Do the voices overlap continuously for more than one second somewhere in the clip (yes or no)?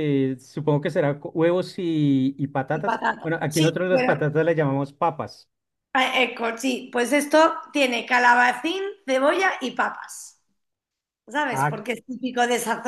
yes